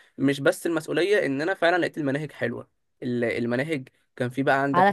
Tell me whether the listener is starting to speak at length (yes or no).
yes